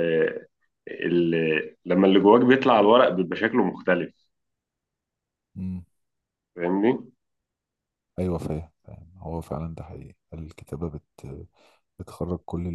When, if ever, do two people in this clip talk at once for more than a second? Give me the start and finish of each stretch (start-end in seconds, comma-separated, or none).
none